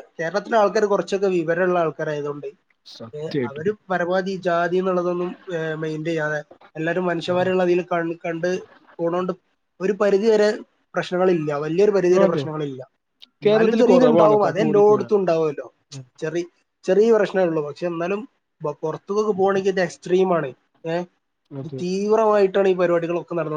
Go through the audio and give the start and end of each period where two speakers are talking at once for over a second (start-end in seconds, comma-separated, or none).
13.4-15.0